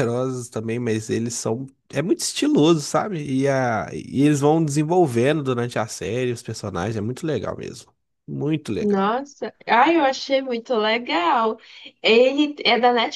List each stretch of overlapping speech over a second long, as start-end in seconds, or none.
none